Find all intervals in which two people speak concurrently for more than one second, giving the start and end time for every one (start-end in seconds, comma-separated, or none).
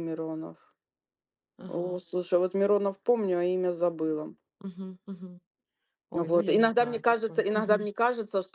6.1-7.9